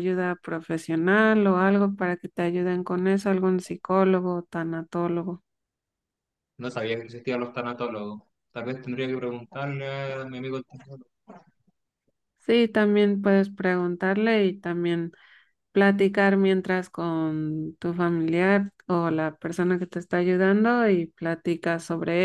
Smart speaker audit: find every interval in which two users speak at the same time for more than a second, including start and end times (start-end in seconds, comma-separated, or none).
none